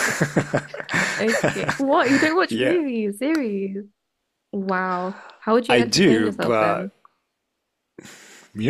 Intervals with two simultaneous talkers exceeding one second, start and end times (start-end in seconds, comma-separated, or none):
5.7-6.9